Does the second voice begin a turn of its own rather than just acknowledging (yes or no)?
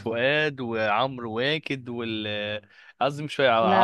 no